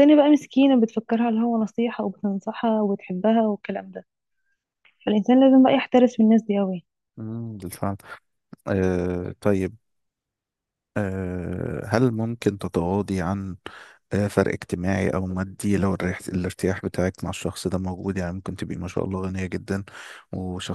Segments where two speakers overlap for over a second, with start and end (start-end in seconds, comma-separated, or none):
none